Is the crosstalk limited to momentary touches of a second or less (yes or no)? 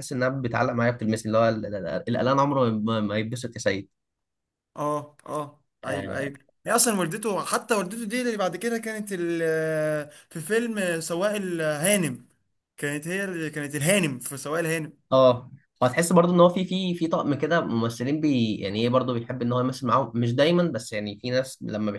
yes